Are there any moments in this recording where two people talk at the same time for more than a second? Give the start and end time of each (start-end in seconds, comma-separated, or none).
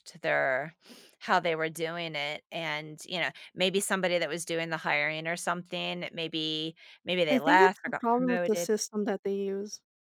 7.3-8.7